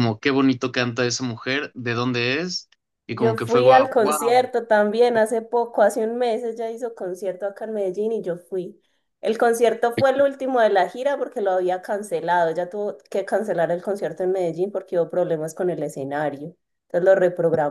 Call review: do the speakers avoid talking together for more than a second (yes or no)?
no